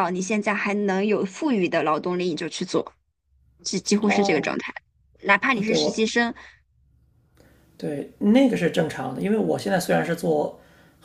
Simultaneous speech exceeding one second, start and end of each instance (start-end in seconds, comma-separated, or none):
none